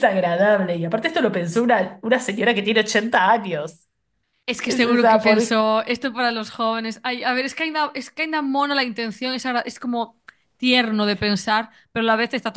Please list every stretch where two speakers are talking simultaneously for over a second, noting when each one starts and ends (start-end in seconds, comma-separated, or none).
none